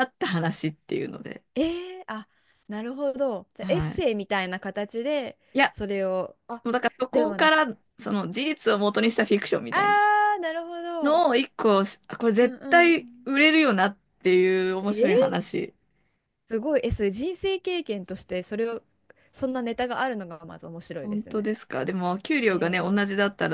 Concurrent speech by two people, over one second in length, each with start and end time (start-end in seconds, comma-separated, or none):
none